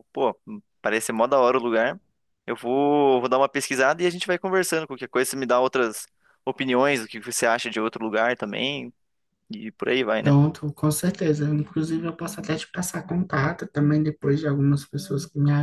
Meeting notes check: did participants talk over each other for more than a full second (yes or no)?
no